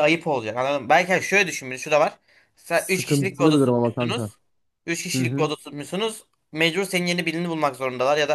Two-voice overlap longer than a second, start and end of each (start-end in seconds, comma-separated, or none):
2.7-4.3